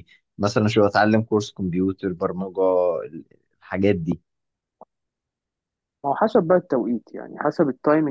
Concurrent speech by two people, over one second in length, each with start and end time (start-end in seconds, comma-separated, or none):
none